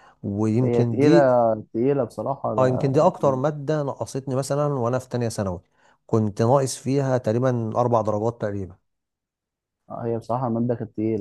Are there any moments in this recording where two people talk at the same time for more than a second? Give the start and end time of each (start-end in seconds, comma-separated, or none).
none